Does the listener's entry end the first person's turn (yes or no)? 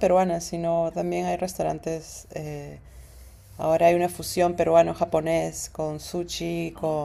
no